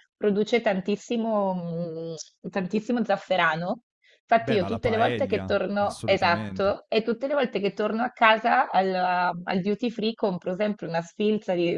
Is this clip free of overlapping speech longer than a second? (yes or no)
no